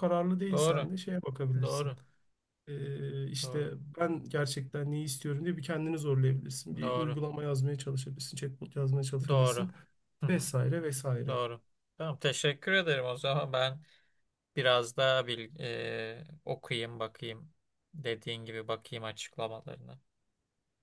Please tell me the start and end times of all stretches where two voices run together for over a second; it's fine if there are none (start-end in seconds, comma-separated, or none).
none